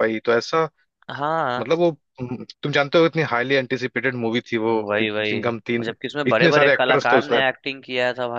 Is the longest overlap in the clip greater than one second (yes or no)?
yes